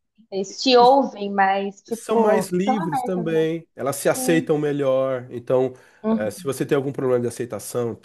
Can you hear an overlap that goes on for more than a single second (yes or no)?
yes